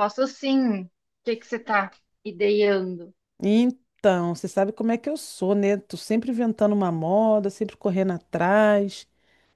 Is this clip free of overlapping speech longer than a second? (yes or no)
yes